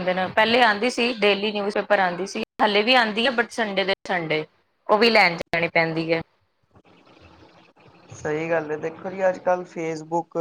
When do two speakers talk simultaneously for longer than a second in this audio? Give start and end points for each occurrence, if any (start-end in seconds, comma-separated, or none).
none